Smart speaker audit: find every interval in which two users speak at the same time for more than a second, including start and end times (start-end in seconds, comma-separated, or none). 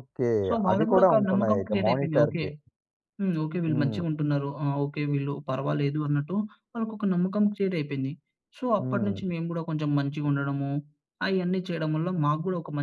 0.7-2.4